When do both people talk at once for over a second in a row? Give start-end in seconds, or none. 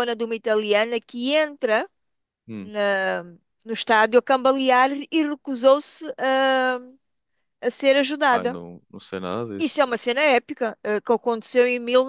none